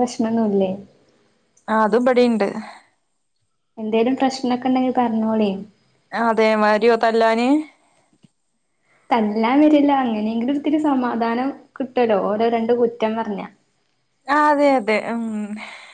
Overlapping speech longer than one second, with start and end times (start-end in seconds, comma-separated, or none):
none